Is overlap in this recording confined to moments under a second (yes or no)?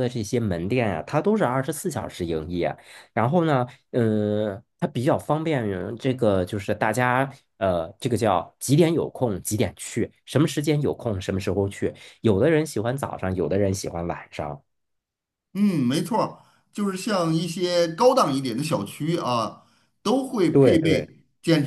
yes